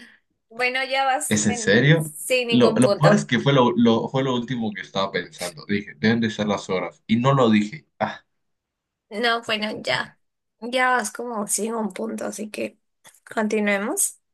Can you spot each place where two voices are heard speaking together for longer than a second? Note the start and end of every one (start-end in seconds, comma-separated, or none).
1.3-3.3